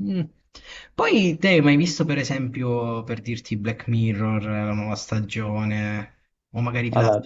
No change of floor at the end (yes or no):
yes